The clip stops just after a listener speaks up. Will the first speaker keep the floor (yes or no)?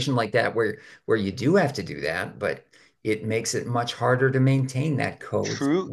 no